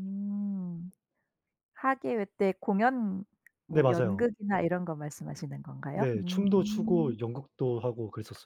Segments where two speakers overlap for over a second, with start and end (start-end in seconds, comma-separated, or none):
5.9-7.2